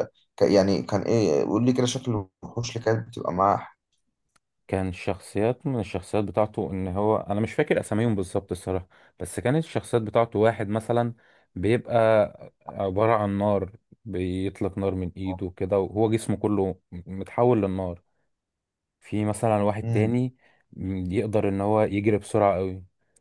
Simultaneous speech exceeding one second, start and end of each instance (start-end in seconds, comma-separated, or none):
none